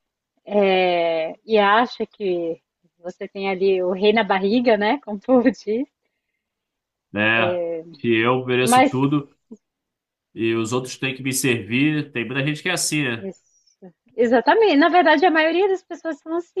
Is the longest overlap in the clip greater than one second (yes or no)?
no